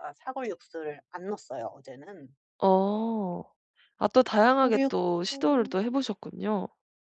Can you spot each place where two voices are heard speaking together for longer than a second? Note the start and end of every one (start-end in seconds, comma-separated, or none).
none